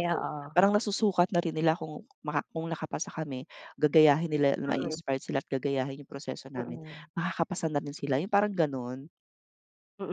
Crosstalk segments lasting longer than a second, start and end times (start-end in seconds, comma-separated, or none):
none